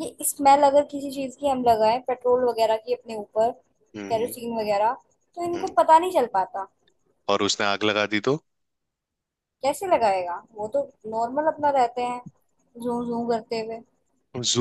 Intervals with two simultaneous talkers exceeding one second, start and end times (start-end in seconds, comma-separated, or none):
none